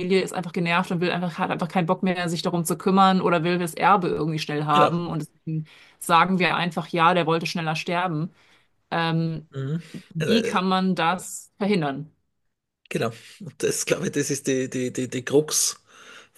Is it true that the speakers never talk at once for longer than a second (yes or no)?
yes